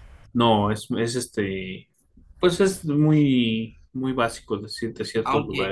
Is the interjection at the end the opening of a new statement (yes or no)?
yes